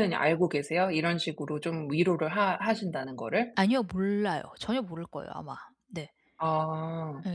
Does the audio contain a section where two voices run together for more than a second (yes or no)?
no